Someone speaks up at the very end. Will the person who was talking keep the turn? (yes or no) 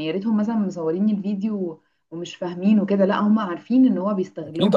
no